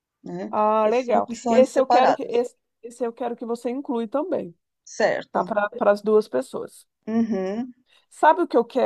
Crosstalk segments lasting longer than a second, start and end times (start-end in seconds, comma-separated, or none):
0.5-2.5